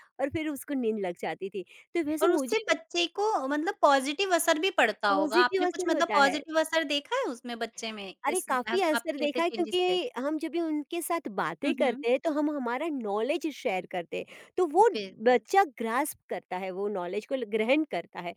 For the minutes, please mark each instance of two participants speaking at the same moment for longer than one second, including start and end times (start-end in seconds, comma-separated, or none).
5.1-6.4, 8.3-10.0